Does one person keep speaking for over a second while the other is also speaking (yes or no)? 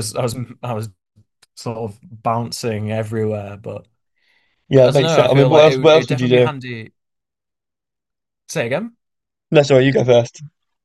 yes